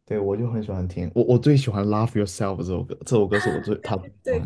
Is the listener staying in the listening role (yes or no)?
no